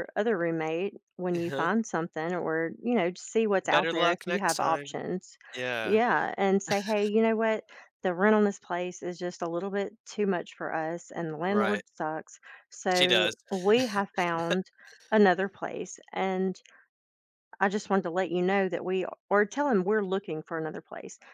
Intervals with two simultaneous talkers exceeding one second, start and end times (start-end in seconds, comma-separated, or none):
3.6-5.0